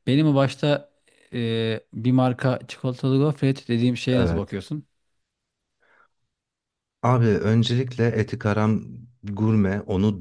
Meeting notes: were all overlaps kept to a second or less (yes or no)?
yes